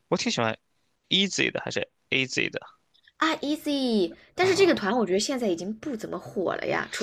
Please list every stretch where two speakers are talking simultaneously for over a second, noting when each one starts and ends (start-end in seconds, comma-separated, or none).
none